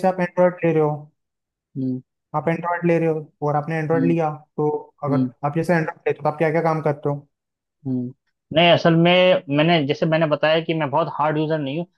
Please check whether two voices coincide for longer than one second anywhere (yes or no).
no